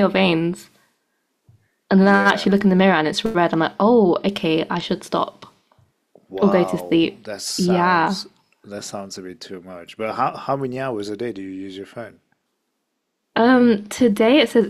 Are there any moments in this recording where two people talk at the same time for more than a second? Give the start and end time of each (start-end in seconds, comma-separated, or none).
6.4-8.2